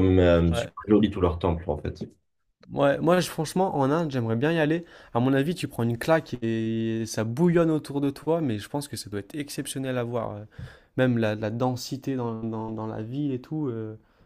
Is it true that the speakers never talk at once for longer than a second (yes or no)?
yes